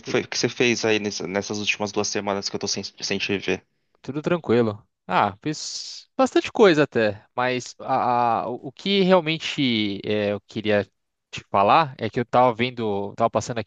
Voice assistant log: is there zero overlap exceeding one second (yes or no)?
yes